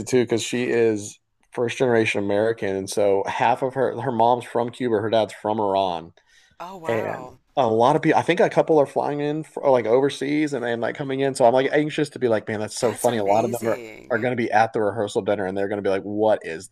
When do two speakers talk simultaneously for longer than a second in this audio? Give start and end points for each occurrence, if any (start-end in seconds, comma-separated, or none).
12.8-14.3